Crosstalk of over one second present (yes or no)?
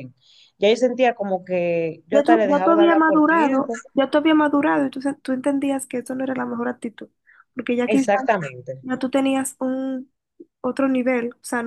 yes